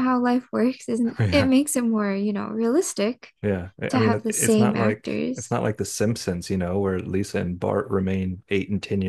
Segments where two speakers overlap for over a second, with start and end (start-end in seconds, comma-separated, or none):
3.9-5.6